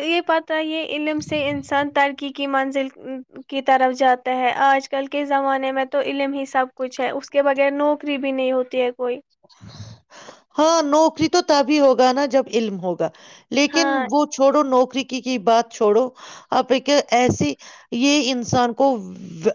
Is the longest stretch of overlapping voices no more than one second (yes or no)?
yes